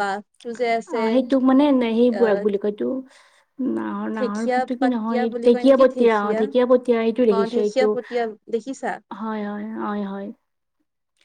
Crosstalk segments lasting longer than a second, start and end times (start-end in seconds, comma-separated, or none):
4.8-6.4